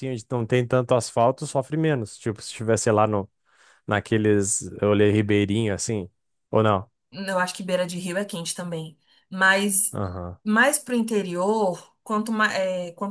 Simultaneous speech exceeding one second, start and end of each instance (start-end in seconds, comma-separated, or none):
none